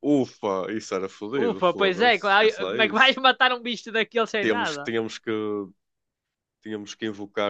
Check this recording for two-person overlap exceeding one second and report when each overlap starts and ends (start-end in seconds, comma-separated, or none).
1.4-3.2